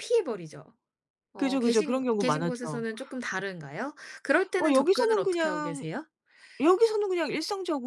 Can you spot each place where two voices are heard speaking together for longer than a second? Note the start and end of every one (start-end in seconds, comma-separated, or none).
1.4-2.9, 4.6-5.8